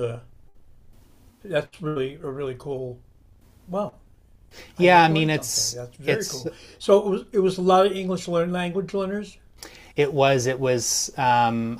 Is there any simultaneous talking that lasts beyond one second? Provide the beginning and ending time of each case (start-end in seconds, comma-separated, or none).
4.8-6.5